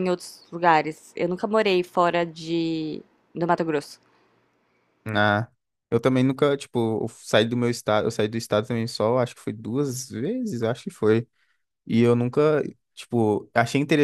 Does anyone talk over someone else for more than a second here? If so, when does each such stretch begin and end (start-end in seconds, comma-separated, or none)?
none